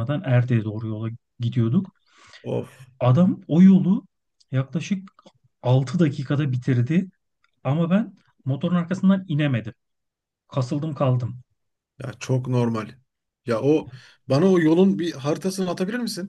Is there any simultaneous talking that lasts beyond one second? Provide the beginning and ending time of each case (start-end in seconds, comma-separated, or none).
none